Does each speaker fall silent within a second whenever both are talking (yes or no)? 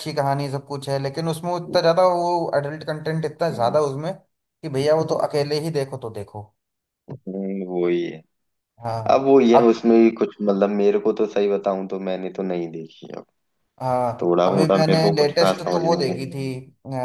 no